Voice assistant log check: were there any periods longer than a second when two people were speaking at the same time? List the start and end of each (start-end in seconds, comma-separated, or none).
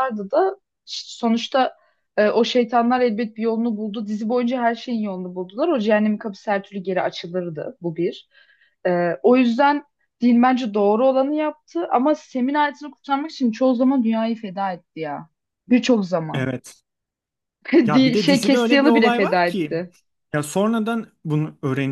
17.9-19.8